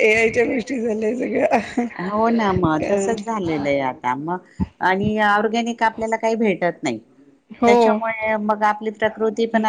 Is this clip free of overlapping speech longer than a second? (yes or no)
yes